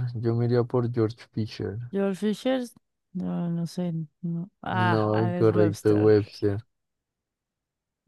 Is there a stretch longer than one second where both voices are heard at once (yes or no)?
yes